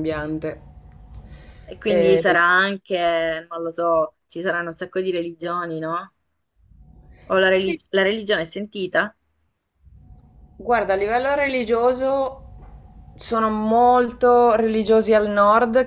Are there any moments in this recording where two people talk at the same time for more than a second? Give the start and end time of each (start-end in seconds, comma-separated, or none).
none